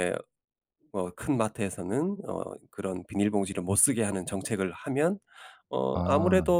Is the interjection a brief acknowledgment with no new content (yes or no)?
yes